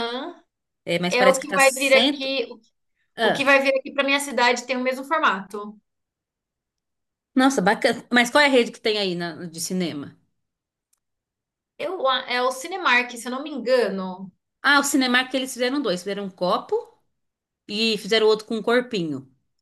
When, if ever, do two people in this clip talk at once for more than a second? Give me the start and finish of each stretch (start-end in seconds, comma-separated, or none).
1.1-2.3